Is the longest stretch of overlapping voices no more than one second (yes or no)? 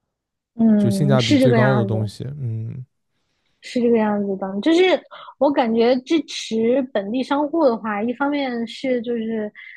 no